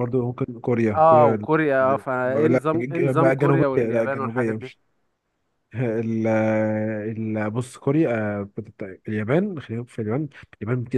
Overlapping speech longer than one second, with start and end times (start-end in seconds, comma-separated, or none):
2.0-4.6